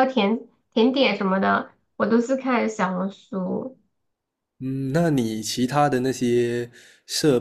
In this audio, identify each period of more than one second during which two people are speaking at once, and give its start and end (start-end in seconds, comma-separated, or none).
none